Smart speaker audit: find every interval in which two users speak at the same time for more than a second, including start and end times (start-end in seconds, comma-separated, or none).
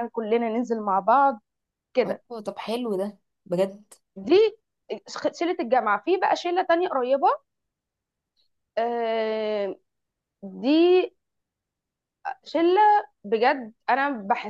none